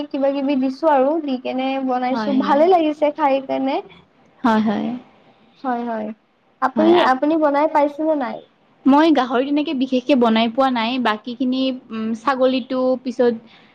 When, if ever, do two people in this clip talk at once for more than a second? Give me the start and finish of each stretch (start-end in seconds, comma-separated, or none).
none